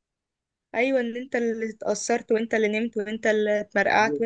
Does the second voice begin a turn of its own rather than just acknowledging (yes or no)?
yes